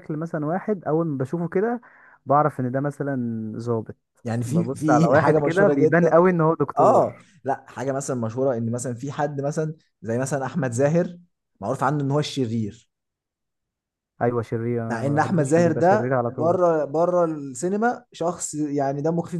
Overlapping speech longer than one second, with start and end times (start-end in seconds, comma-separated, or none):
4.5-6.1, 14.9-16.6